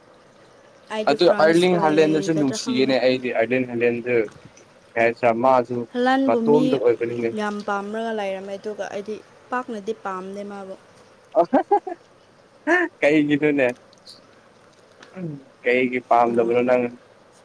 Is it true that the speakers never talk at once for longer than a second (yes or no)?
no